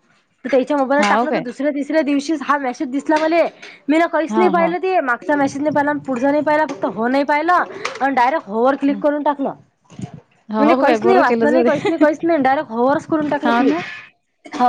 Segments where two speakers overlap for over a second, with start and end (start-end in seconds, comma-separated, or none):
10.6-12.0